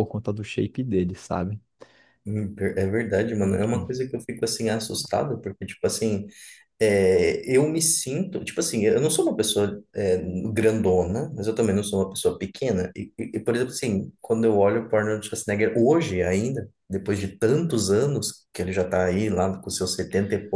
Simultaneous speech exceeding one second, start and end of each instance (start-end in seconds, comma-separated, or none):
none